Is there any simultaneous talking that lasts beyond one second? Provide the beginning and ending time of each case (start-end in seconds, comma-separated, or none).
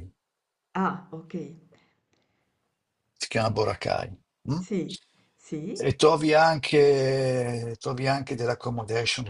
none